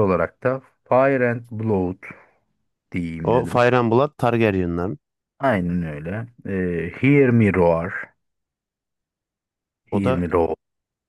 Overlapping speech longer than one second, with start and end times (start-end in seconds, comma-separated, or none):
none